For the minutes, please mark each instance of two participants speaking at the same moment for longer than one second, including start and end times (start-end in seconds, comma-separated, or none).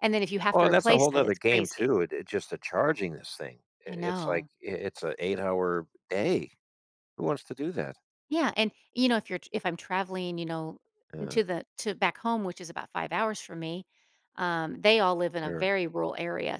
0.5-1.9